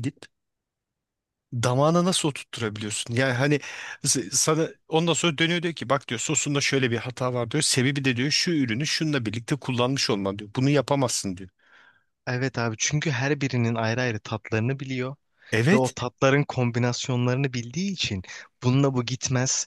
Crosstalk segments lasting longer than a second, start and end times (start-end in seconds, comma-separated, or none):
none